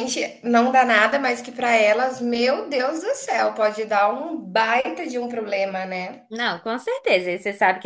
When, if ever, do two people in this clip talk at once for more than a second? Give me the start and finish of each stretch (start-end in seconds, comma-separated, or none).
none